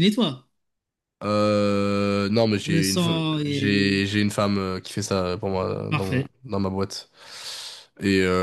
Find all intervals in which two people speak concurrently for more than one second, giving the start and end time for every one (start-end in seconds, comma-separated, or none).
2.6-4.0